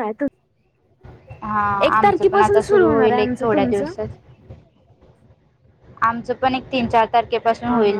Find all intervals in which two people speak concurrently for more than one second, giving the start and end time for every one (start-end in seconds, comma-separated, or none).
1.9-3.9